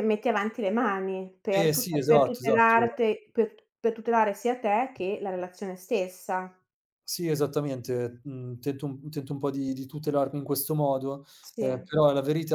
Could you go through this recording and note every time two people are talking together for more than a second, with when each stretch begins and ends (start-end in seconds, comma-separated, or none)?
1.5-2.9